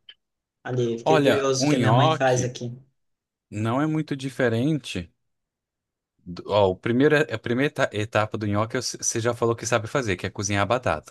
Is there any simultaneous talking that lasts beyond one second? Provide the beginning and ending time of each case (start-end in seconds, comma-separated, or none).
1.0-2.5